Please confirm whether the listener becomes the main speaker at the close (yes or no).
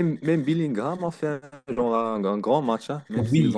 yes